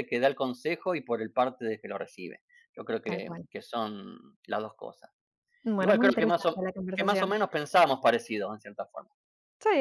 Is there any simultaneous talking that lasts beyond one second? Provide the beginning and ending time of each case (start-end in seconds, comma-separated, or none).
5.8-7.3